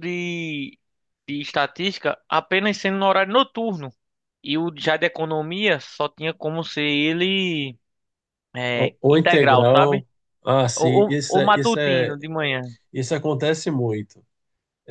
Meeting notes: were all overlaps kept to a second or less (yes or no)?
no